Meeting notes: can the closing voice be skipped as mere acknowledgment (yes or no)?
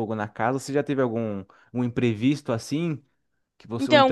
no